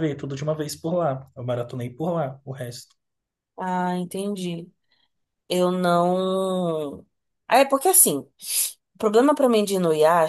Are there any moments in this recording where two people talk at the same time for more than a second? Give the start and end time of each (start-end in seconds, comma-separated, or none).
none